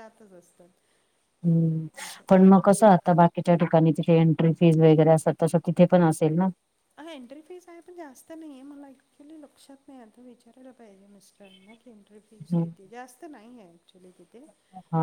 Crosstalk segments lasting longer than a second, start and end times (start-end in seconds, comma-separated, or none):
none